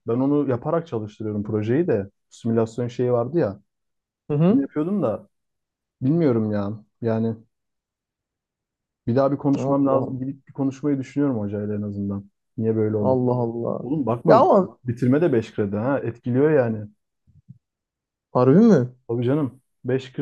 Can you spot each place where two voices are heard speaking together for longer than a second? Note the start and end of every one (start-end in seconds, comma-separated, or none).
none